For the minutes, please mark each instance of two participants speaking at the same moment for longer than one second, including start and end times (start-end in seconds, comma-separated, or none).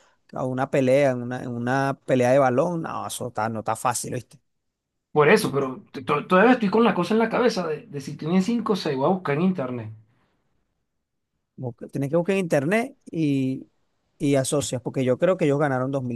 none